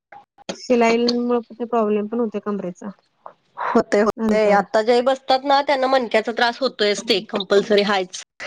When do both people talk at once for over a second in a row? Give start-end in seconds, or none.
none